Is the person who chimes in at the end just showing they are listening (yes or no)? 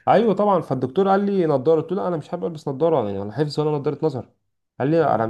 yes